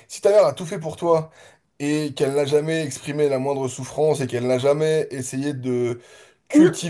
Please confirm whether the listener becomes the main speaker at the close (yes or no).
no